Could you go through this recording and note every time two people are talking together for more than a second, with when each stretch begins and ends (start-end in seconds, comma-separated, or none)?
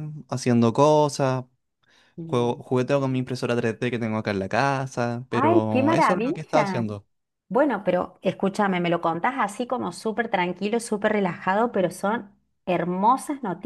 5.3-6.8